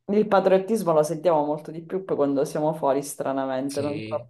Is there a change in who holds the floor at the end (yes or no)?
yes